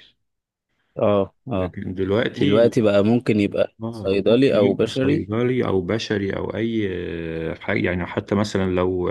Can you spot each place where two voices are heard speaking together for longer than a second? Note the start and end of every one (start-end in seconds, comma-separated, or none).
3.8-5.3